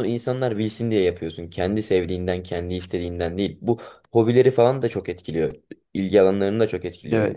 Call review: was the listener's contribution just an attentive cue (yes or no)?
no